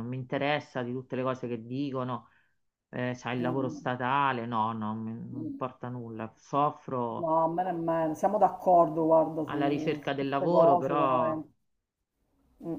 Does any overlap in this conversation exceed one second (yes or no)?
yes